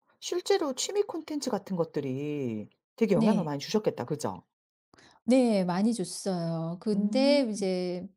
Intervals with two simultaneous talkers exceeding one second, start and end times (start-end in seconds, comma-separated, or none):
none